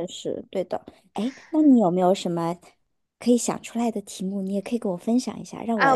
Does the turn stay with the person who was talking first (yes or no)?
no